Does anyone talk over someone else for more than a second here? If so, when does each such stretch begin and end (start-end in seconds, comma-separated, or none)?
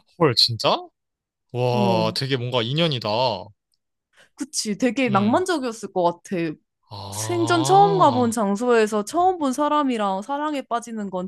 7.1-8.3